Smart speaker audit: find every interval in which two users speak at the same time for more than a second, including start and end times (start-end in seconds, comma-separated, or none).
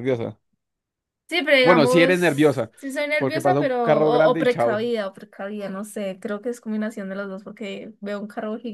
3.2-4.9